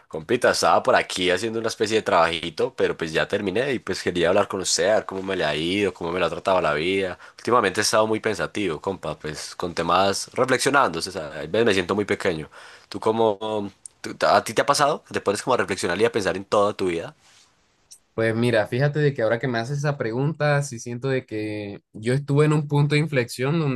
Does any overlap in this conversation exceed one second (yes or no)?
no